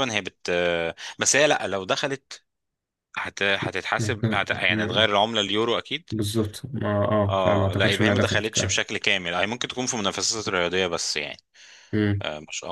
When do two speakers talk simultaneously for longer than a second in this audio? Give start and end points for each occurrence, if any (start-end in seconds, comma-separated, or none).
7.3-8.8